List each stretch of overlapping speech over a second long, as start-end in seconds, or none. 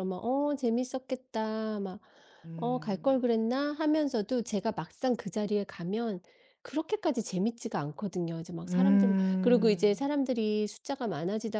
8.6-10.1